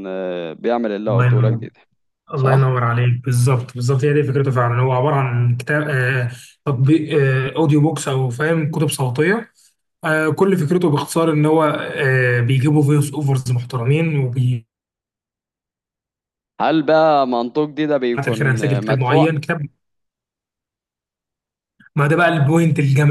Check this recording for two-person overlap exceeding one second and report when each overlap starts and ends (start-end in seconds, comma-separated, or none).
18.1-19.4